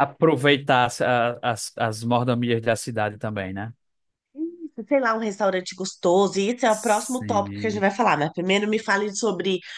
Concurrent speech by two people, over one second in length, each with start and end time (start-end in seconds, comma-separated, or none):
6.7-7.8